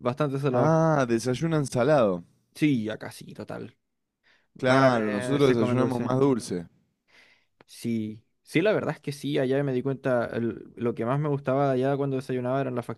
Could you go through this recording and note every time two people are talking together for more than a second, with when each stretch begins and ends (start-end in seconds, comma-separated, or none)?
4.5-6.1